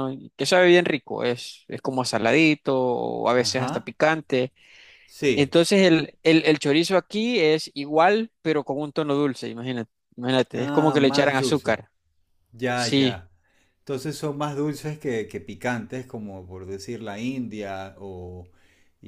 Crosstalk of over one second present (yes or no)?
yes